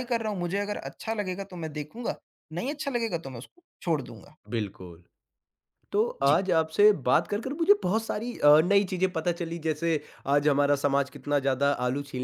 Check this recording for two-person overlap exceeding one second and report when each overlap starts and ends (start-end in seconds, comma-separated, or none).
none